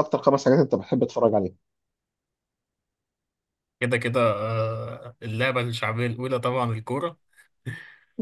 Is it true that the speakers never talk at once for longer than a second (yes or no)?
yes